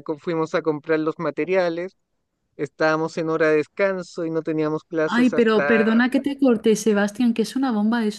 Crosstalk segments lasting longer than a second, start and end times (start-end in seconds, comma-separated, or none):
none